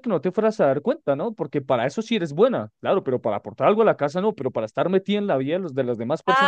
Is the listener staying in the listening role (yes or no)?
no